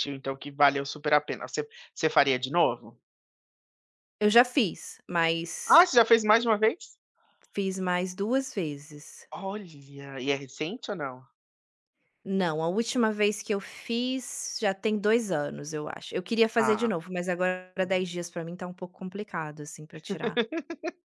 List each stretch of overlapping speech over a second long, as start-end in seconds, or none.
none